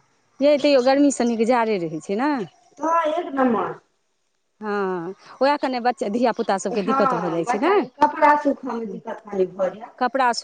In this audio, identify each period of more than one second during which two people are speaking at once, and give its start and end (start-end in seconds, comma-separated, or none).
6.8-9.0